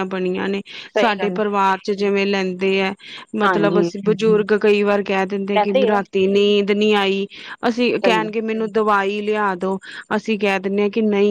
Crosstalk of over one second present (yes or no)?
no